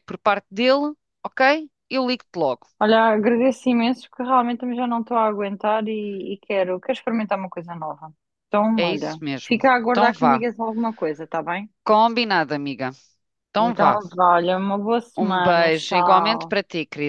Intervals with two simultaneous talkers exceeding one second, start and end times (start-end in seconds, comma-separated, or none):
8.8-10.4, 15.1-16.6